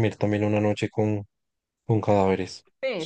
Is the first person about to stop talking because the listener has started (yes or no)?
yes